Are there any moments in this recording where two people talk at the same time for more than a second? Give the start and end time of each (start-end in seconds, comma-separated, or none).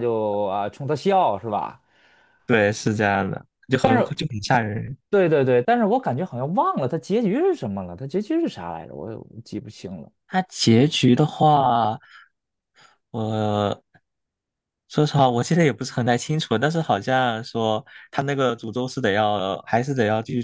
none